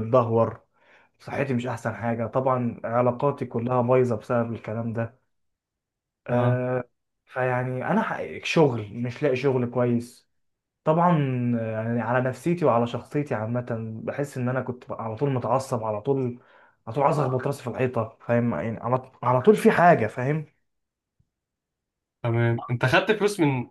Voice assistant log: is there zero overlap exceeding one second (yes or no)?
yes